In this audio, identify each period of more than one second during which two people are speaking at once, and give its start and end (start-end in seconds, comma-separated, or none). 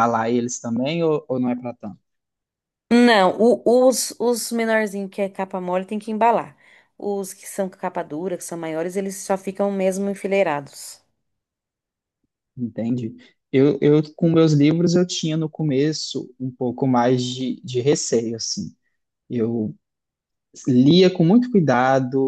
none